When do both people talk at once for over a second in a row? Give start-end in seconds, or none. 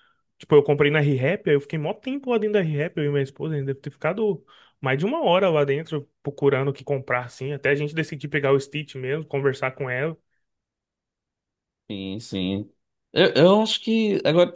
none